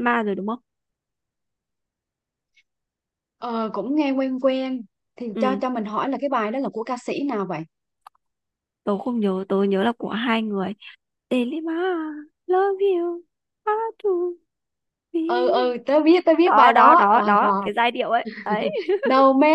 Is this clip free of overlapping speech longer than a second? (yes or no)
no